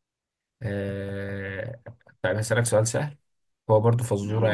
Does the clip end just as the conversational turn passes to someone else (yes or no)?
no